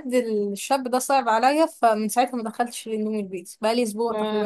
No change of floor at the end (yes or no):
no